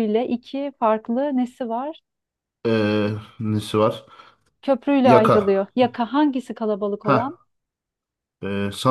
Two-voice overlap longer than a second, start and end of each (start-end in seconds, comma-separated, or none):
none